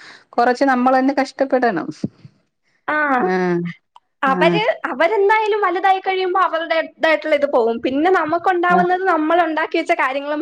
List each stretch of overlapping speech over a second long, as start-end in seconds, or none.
none